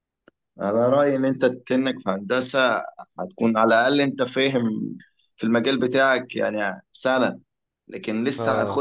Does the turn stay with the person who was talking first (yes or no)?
yes